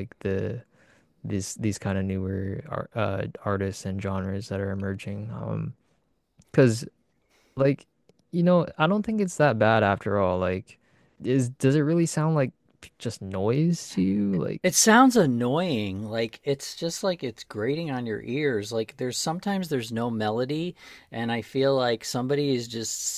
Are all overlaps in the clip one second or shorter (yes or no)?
yes